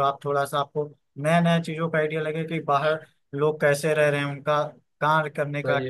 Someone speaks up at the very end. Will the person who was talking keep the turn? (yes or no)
yes